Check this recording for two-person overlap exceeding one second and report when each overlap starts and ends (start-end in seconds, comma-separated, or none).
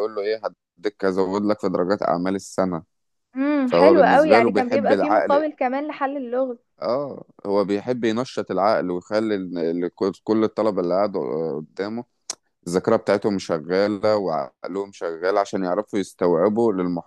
3.6-5.5